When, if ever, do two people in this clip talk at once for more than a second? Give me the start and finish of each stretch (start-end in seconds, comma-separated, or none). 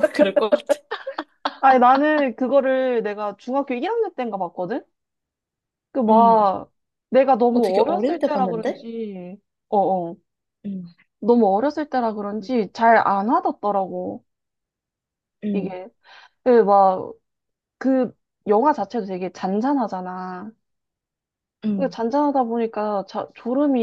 7.5-8.8